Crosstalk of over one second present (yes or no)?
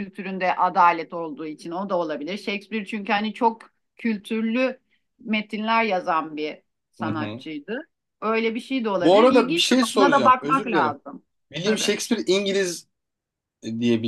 yes